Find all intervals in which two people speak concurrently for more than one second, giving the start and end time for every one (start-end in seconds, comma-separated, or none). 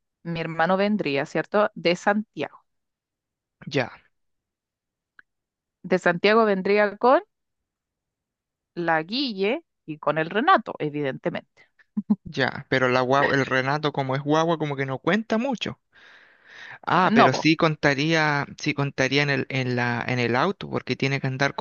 none